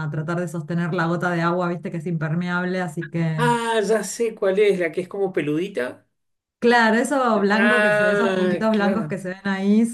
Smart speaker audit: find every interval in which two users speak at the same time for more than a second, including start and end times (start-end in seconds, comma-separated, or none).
7.6-9.2